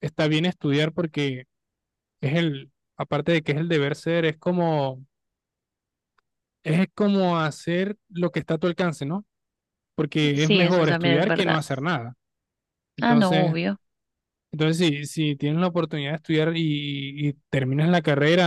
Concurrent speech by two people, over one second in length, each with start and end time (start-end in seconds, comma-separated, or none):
10.3-11.6